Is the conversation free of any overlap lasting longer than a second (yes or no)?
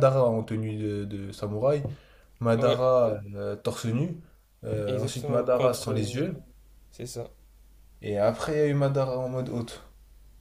no